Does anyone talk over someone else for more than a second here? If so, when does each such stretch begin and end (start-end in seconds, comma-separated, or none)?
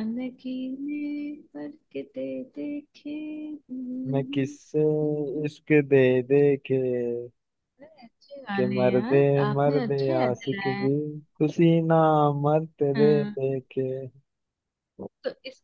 8.5-10.9